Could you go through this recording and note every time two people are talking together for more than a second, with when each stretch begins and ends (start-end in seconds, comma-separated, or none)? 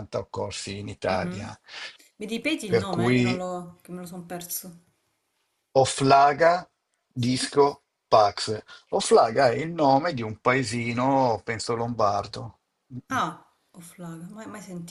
none